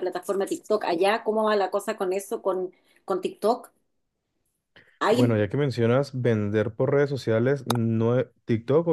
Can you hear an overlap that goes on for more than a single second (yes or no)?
no